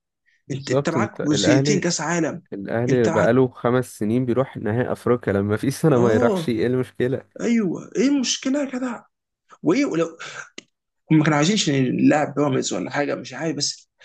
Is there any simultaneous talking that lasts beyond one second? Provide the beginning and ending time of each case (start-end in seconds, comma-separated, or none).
0.5-1.8